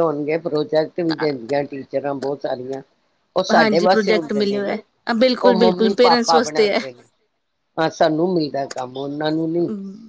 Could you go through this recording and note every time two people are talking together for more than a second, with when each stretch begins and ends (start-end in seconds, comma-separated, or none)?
3.6-4.8, 5.5-6.8